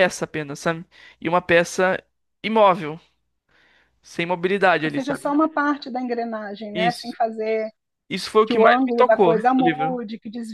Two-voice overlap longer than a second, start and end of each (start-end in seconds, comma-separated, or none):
8.4-10.0